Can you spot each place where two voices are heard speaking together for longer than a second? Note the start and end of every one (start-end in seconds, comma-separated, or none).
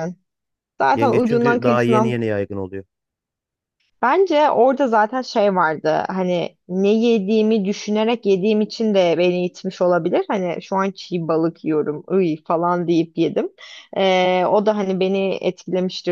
0.9-2.1